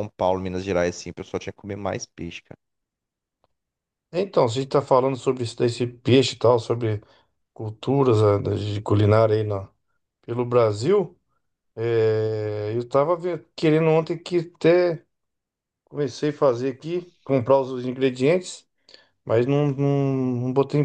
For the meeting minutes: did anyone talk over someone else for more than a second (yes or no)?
no